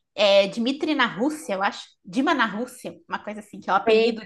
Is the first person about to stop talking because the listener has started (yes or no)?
no